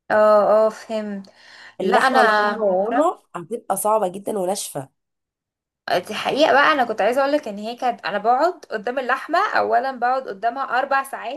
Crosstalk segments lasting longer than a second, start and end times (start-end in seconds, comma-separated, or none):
1.8-3.3